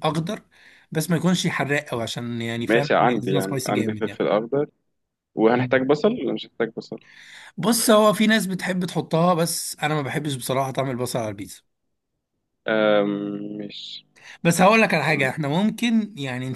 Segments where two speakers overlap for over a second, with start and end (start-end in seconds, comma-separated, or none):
2.7-4.2